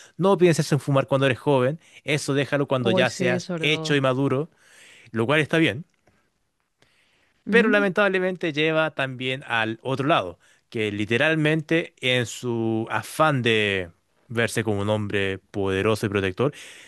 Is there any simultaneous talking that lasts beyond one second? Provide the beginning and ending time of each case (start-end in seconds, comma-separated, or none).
2.8-4.0